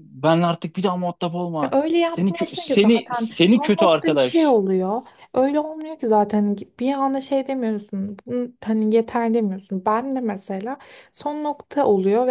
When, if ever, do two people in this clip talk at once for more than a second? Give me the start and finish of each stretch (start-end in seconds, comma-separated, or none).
1.6-4.6